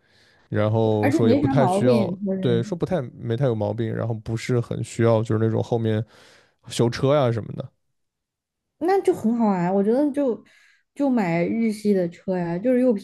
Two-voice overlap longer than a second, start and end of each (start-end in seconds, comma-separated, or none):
1.0-2.7